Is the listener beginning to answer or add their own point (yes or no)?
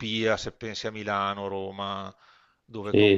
yes